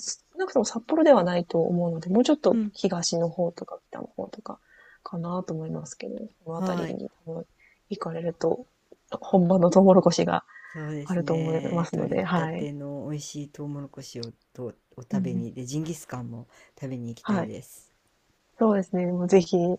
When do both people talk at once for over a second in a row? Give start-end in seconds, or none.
11.0-12.7